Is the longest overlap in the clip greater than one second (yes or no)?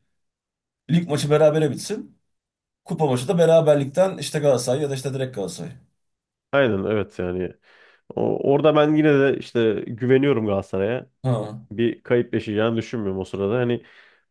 no